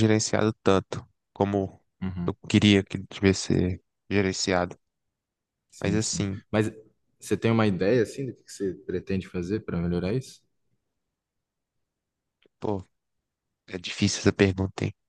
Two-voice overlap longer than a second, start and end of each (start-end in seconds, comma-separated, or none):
none